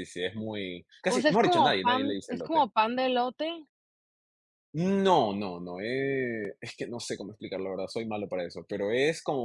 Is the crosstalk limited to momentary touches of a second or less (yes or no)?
no